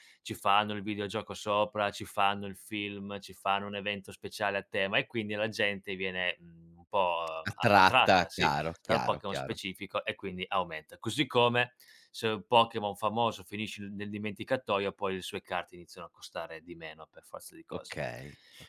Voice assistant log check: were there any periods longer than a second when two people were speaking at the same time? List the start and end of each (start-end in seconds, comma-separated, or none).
7.4-9.6